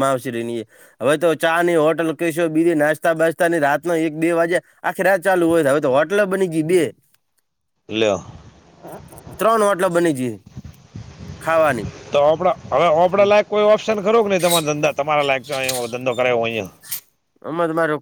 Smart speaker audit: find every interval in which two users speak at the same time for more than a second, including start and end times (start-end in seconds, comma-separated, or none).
none